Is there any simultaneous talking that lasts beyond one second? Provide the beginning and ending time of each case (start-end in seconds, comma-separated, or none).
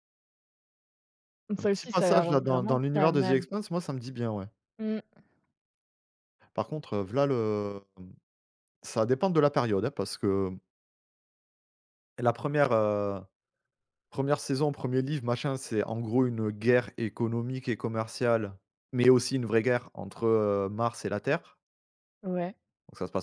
1.6-3.4